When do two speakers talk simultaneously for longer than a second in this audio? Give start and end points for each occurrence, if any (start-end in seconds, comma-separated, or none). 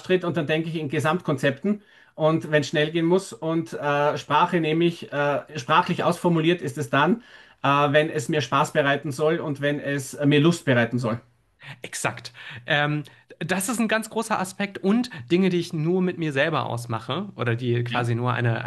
none